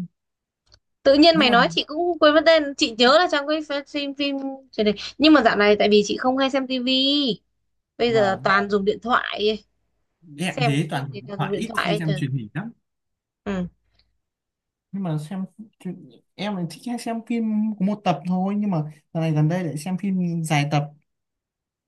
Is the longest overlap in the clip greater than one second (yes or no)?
yes